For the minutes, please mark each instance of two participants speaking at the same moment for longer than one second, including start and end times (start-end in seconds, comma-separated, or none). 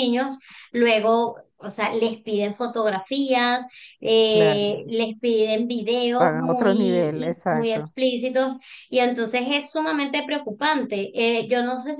6.2-7.9